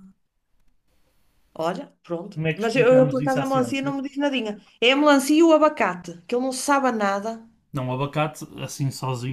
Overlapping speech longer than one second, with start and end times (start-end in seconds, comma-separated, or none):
2.3-3.9